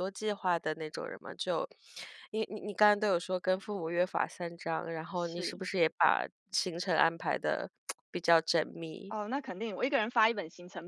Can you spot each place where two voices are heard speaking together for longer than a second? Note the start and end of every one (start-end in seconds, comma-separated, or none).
none